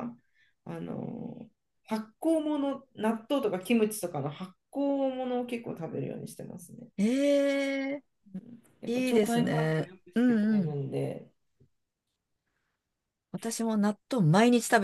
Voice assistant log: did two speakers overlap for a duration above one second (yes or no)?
yes